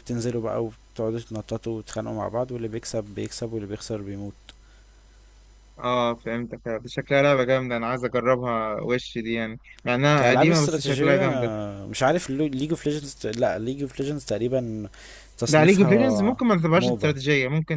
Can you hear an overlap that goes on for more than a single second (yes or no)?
yes